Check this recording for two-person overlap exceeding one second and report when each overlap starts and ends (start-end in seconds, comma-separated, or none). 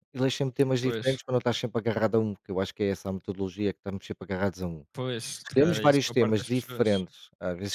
5.4-7.0